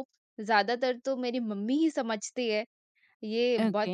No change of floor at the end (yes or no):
yes